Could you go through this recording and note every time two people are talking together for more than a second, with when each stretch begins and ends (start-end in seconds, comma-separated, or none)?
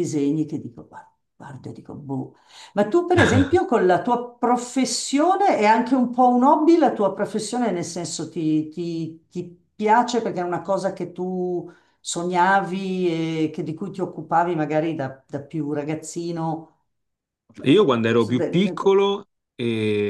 none